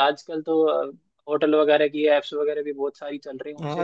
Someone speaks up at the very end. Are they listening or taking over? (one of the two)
taking over